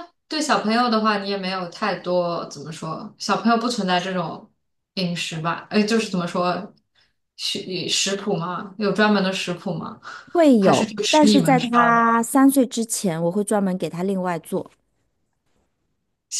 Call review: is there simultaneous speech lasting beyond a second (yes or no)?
yes